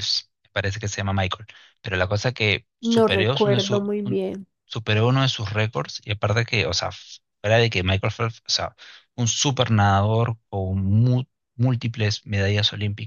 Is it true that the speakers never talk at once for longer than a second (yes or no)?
no